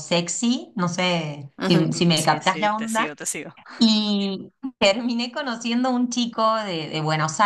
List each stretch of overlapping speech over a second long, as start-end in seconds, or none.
1.6-3.1